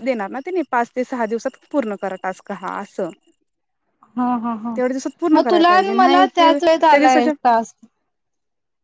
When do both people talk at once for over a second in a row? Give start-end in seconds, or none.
5.7-7.3